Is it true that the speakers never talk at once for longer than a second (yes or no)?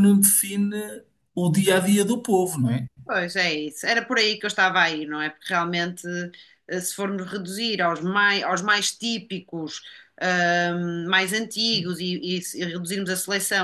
yes